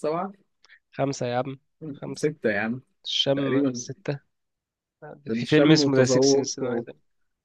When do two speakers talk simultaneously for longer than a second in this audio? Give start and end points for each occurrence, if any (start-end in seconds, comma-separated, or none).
5.3-6.6